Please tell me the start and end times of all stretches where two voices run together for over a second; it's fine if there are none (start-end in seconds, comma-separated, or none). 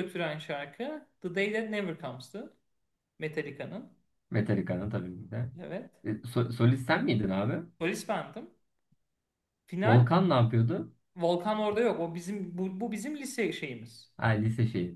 none